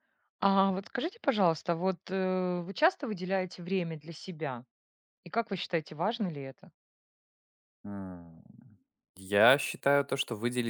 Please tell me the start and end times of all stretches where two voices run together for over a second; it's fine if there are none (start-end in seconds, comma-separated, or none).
none